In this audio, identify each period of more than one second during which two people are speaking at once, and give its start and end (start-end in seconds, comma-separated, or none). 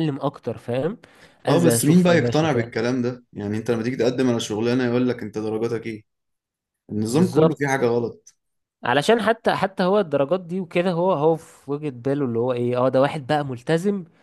1.5-2.7